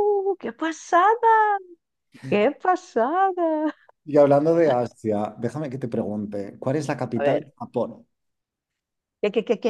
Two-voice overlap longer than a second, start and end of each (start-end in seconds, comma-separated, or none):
none